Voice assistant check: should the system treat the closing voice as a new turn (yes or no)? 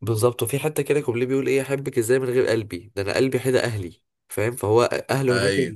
no